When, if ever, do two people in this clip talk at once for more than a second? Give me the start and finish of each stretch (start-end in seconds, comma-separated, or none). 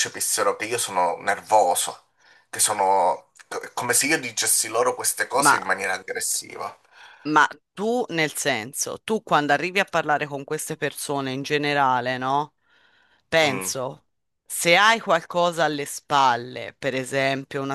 none